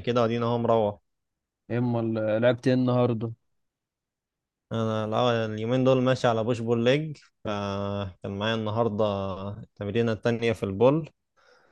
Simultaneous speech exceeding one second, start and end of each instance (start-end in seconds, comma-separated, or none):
none